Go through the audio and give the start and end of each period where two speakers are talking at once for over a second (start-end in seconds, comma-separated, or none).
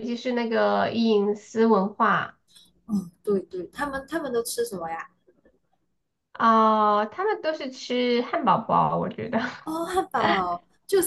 none